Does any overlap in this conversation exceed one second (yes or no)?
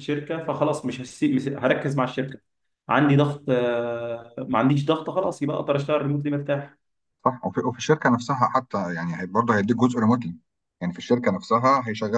no